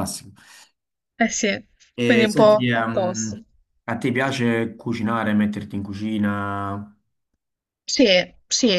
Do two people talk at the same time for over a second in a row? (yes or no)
yes